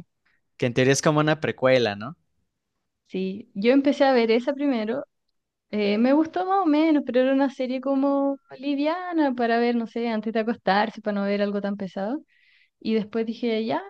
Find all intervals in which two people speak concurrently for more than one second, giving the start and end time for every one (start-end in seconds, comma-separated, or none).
none